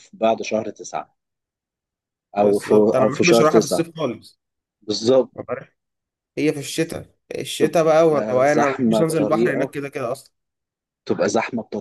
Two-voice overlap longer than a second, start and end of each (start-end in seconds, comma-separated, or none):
2.4-3.9, 7.6-9.7